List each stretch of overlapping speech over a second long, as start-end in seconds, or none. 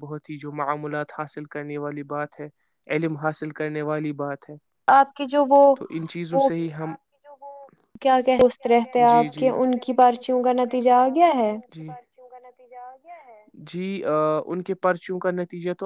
none